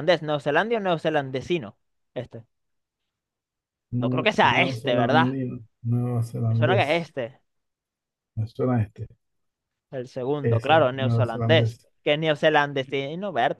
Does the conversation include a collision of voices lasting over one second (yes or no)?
yes